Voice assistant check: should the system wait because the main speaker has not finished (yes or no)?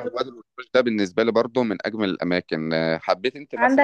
no